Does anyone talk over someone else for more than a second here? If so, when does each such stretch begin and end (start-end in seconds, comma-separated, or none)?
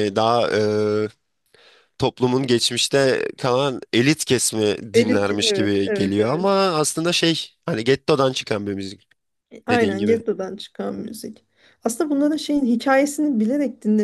4.9-6.5